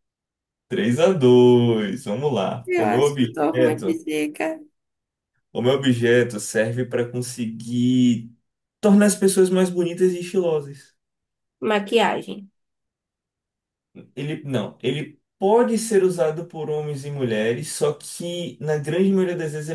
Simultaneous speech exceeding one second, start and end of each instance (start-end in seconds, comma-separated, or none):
2.6-4.0